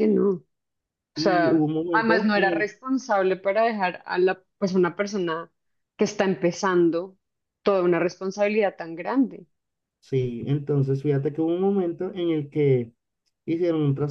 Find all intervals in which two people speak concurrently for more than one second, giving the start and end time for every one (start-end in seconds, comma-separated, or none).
1.1-2.7